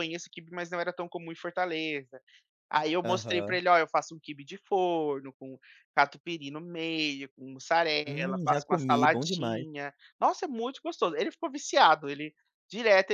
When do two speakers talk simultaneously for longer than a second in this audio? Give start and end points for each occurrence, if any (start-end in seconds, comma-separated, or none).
8.1-9.7